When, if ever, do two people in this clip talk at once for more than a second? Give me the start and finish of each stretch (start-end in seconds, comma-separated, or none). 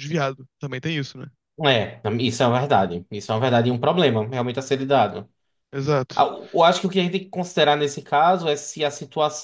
none